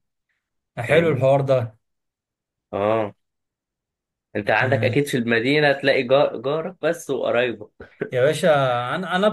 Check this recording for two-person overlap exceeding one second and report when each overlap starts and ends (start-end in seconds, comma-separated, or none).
none